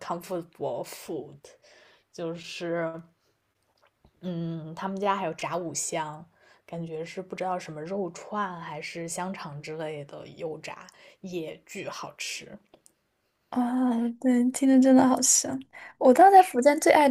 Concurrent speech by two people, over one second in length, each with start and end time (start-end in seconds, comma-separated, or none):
none